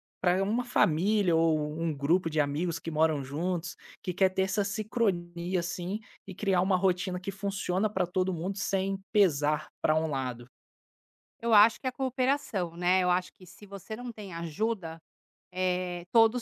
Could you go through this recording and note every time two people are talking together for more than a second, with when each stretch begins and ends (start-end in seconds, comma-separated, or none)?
none